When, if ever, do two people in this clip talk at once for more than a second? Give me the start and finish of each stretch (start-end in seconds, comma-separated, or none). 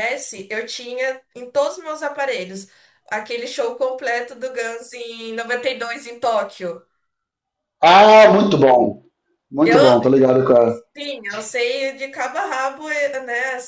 none